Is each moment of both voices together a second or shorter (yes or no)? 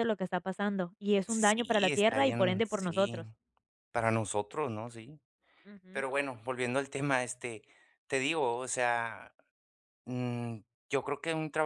no